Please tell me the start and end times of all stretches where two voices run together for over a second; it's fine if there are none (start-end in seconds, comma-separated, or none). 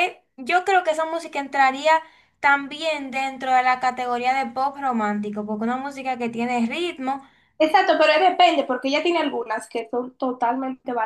none